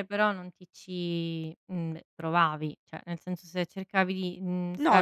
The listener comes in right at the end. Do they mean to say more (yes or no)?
yes